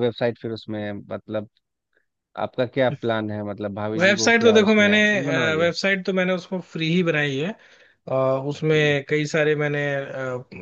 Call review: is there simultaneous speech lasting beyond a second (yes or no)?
yes